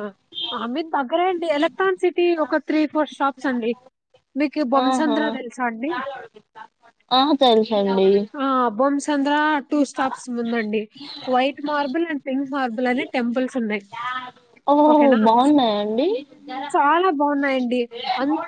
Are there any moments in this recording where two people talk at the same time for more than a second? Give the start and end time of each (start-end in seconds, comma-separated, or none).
none